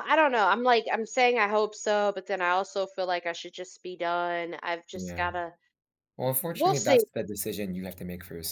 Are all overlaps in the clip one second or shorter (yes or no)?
yes